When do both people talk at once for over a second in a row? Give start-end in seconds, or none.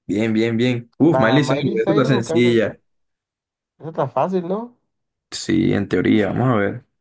1.1-2.7